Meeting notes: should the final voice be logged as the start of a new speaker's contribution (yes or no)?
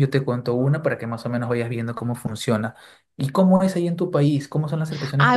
yes